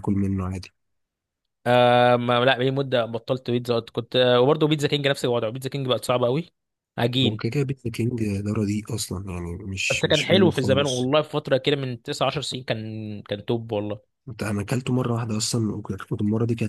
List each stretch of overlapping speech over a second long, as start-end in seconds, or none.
9.9-11.1